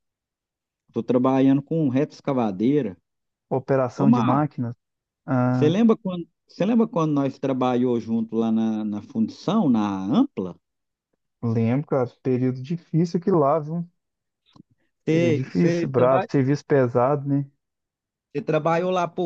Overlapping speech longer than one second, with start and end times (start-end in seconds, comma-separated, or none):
15.1-16.3